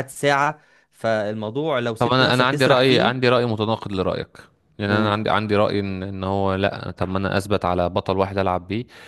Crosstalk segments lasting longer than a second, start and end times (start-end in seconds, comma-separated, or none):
2.0-3.3